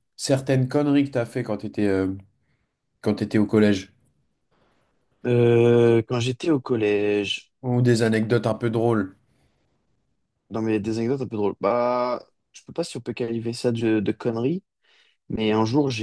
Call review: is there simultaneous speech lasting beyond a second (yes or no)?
no